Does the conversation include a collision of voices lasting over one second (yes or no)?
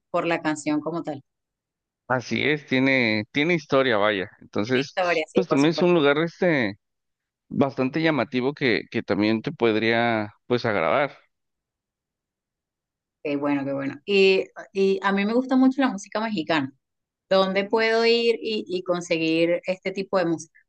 yes